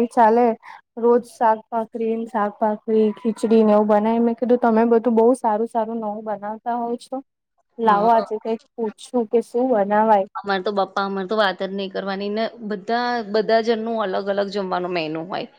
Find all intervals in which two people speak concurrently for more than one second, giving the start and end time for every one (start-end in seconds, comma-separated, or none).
none